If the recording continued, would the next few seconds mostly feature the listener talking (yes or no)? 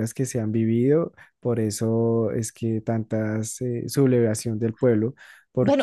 yes